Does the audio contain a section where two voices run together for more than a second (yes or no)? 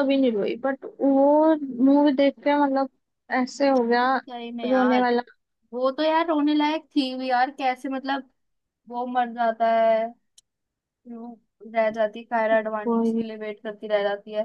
no